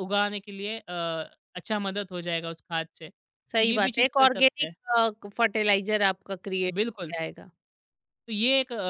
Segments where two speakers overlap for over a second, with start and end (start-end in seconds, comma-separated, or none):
3.5-4.7